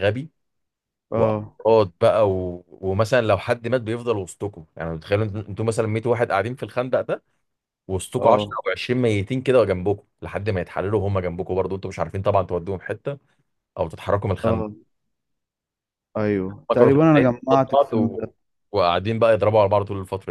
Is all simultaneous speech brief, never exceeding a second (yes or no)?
no